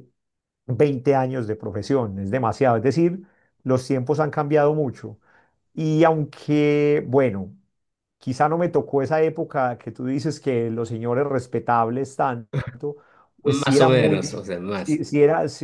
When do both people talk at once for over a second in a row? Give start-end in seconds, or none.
13.4-15.0